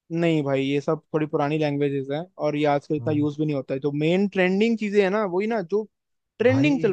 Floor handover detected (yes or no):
yes